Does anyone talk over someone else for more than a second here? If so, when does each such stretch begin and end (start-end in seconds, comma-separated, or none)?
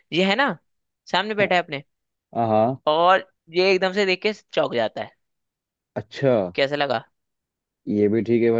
none